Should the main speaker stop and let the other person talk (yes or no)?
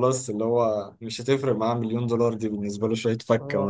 yes